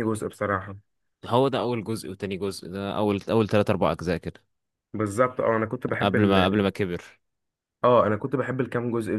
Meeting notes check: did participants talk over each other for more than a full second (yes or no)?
no